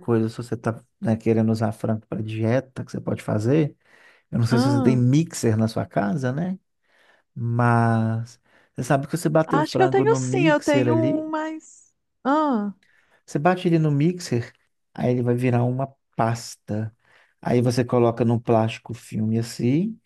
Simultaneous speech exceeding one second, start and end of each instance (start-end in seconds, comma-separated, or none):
9.5-11.3